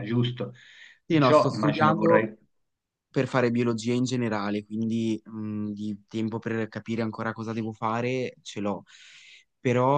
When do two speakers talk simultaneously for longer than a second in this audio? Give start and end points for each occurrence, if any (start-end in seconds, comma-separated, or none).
1.0-2.3